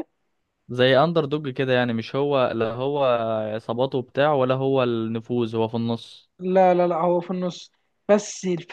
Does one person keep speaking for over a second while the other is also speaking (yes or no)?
no